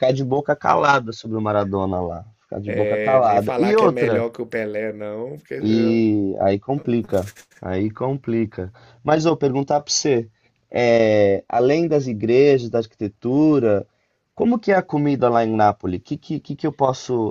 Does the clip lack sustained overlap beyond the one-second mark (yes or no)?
no